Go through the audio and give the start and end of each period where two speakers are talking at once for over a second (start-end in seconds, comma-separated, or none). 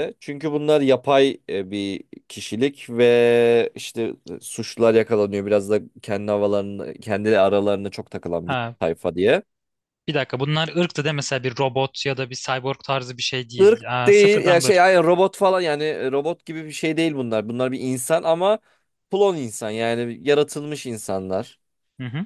13.6-15.0